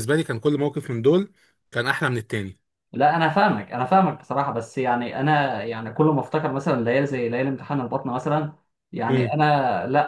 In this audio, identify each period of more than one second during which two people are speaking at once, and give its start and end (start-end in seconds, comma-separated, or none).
none